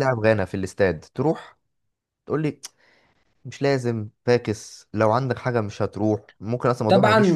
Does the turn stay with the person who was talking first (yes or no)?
no